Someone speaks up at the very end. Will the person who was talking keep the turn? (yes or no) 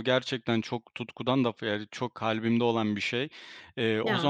yes